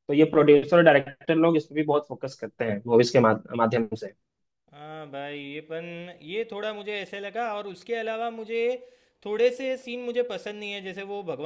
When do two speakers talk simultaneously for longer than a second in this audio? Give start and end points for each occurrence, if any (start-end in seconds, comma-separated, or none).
none